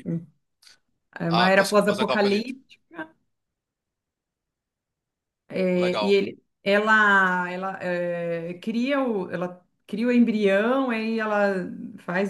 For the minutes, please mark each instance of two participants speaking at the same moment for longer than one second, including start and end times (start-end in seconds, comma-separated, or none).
1.3-2.5